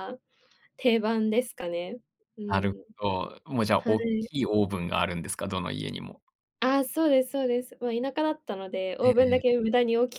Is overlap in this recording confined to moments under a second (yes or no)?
yes